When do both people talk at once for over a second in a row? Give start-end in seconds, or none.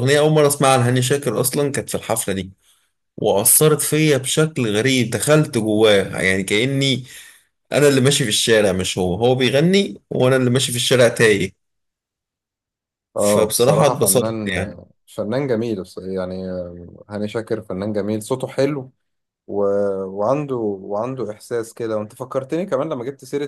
13.2-14.5